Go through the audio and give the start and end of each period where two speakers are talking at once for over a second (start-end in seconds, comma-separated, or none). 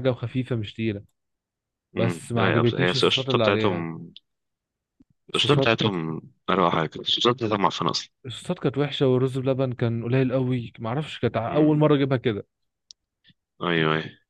2.0-3.9